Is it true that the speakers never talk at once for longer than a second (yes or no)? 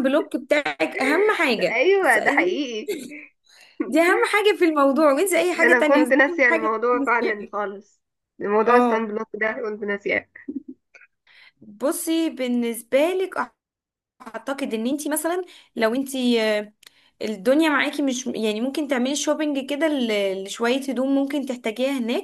no